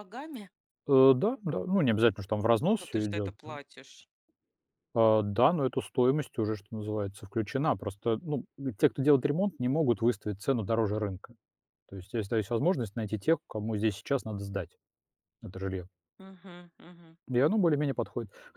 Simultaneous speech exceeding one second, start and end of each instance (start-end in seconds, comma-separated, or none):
none